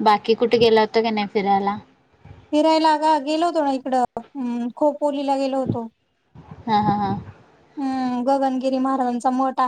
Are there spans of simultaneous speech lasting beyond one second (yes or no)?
no